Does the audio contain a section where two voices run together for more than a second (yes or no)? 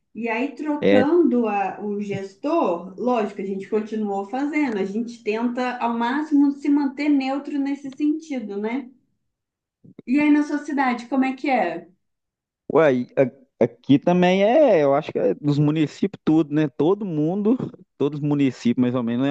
no